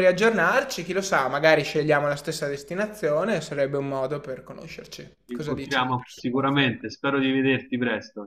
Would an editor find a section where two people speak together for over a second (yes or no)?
yes